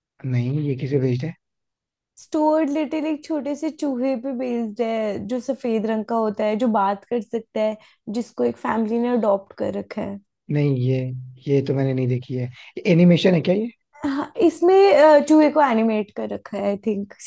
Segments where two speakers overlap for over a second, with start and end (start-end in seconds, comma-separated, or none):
none